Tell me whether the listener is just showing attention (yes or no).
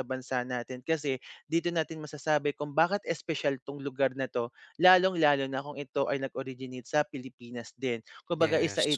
yes